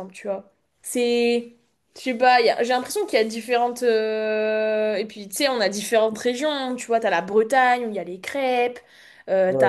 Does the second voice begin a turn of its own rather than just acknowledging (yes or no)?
no